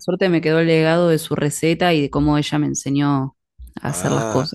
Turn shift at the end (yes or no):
yes